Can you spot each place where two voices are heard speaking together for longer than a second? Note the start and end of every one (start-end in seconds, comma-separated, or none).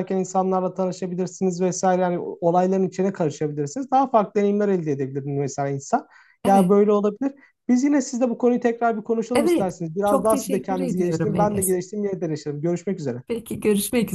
9.3-11.7